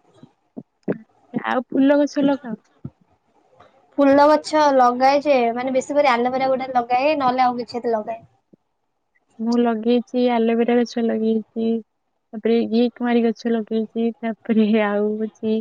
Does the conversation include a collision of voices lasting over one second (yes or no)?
no